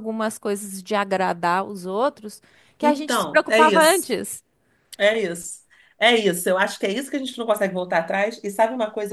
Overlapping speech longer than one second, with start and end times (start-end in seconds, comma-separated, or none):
2.8-4.1